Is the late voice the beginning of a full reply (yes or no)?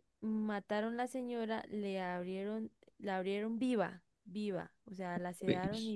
no